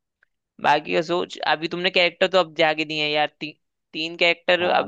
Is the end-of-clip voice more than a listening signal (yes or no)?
yes